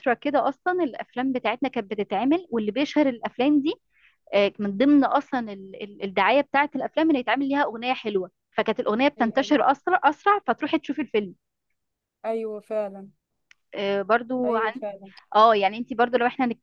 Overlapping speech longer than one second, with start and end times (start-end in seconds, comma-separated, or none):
none